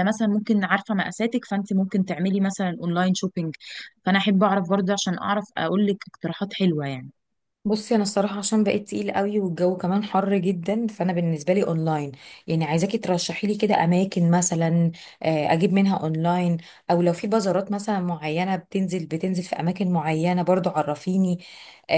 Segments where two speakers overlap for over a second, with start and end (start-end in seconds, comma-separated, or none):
none